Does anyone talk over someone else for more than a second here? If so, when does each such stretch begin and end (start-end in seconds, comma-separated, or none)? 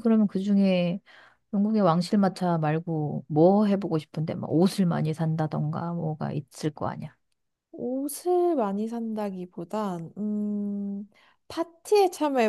none